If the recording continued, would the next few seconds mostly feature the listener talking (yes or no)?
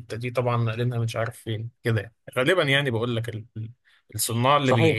yes